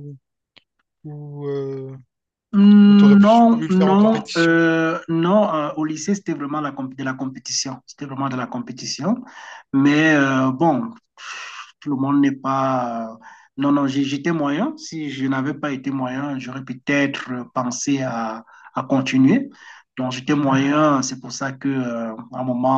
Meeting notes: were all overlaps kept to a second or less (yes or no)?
no